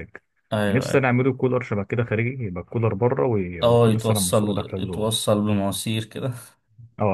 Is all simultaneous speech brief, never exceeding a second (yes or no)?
no